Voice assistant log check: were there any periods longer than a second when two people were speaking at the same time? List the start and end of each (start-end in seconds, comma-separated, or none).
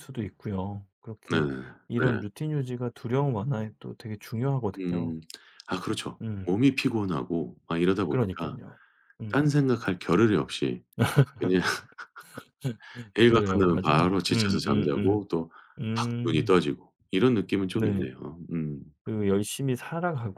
13.3-15.2